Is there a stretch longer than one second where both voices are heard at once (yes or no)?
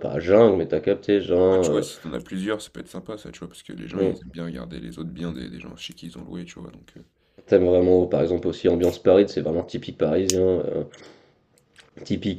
no